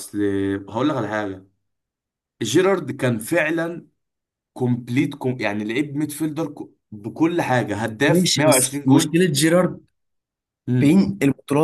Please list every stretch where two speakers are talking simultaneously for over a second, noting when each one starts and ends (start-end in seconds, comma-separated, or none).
8.1-9.2